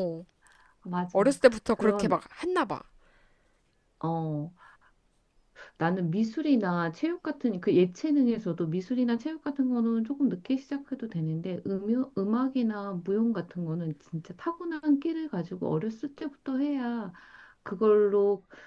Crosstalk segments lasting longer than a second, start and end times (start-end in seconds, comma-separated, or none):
none